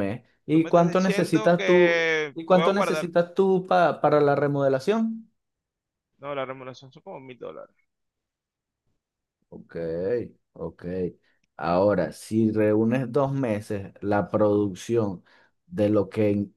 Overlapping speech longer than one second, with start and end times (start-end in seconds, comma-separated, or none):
0.5-3.1